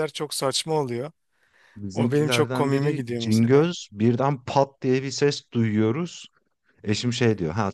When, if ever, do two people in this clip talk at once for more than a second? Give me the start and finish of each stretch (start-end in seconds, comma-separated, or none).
1.9-3.7